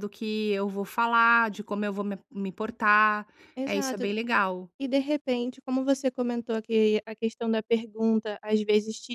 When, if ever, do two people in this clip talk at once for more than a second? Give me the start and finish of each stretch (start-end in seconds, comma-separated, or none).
none